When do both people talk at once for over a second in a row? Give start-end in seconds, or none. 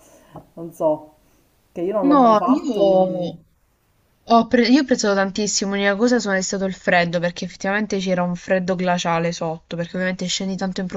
2.0-3.4